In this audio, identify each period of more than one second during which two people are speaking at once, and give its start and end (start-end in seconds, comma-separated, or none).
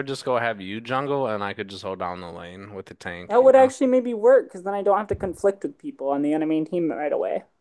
none